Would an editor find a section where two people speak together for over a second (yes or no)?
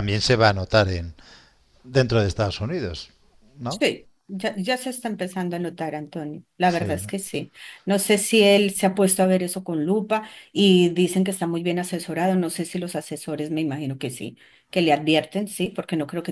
no